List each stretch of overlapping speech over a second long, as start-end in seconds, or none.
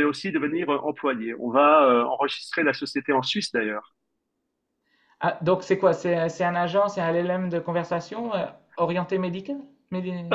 none